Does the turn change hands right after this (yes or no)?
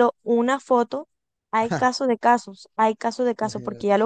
no